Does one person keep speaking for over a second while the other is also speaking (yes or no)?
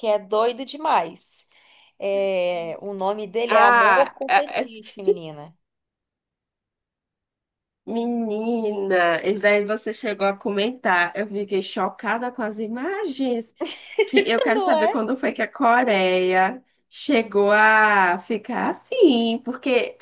yes